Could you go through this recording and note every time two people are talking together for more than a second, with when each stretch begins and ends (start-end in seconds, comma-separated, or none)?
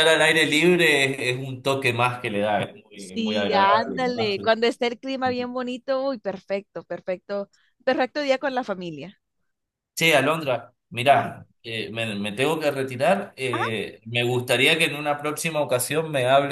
3.0-4.5